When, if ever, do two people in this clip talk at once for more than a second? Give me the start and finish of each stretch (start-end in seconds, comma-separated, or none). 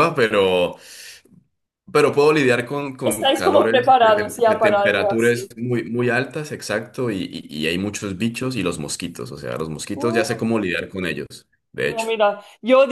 3.0-5.5